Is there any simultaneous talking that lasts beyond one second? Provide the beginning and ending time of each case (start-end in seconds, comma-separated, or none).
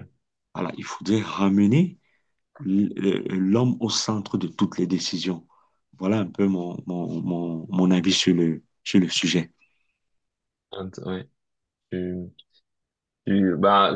none